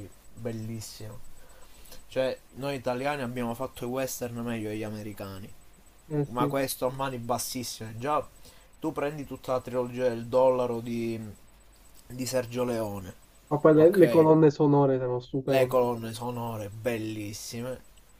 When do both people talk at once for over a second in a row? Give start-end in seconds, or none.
none